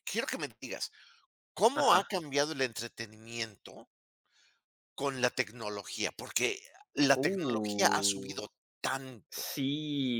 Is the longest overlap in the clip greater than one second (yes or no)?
yes